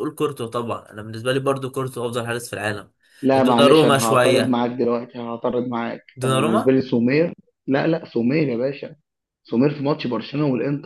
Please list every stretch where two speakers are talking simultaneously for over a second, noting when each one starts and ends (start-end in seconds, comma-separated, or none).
3.3-4.6